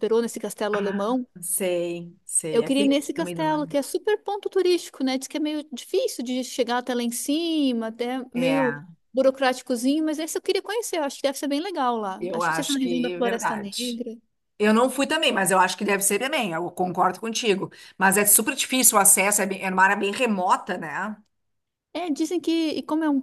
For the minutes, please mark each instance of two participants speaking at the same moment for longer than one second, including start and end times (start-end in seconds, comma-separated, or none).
2.5-3.8, 12.2-14.0